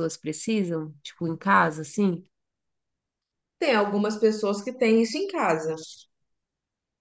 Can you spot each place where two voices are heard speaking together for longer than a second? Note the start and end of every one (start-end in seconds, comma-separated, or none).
none